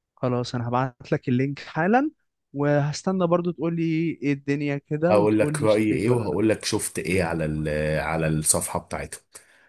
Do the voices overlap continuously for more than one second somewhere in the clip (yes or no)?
yes